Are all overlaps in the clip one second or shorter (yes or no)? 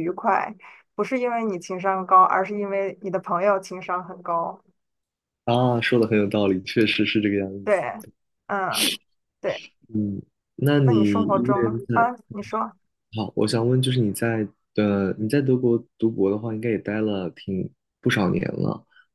no